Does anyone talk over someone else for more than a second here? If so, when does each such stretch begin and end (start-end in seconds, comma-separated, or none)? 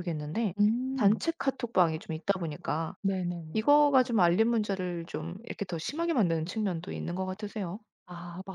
none